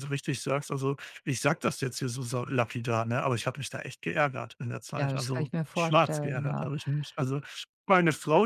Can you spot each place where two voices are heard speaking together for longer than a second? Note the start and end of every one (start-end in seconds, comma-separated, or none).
4.9-6.7